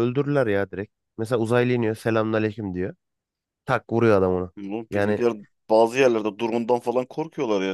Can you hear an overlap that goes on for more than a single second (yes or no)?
no